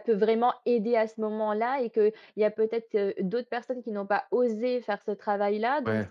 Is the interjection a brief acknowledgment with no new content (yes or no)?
yes